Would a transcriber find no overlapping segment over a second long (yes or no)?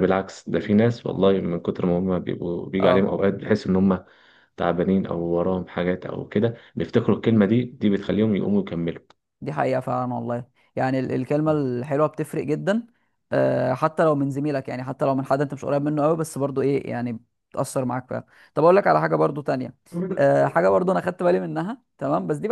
yes